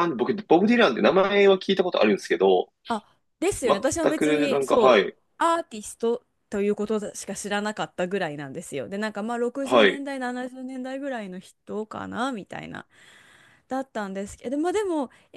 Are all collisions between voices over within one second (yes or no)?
no